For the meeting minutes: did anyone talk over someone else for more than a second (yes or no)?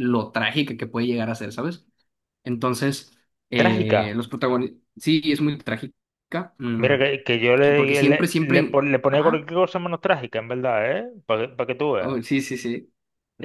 yes